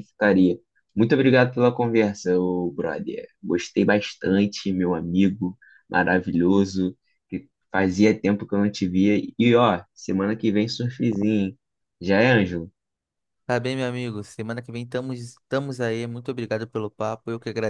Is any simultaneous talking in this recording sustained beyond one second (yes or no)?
no